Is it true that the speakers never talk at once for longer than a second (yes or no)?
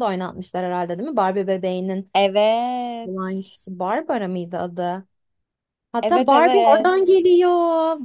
no